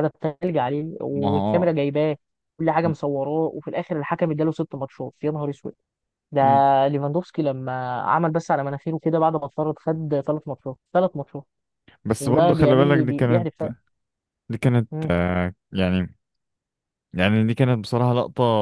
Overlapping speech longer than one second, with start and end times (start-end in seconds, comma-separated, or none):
12.2-13.5